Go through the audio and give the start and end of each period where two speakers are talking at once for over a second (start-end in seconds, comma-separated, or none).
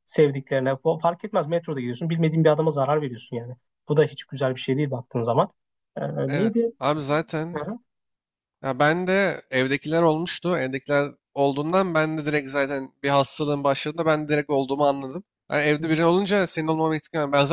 none